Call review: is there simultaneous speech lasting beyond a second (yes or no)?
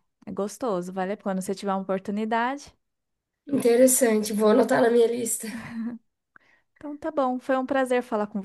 no